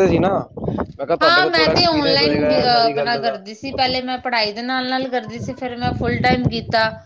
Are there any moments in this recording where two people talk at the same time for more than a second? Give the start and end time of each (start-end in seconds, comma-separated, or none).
1.2-3.4